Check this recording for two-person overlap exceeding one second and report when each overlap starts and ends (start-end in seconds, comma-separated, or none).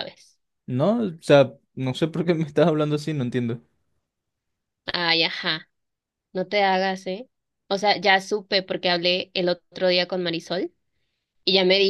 none